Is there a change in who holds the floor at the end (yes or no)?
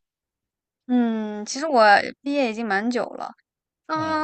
no